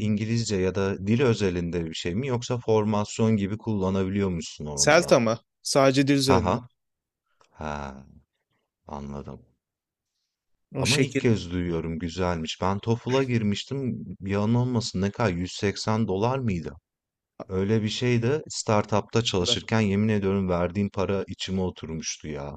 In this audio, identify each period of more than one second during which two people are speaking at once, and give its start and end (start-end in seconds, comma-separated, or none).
none